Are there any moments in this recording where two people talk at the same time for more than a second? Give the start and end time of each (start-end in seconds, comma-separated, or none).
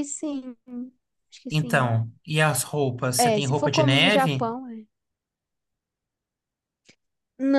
3.3-4.5